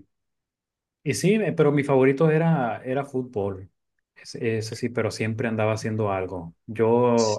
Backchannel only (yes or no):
yes